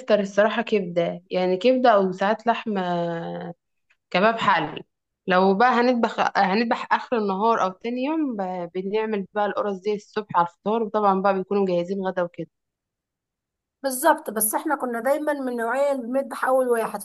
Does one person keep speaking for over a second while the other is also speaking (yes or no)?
no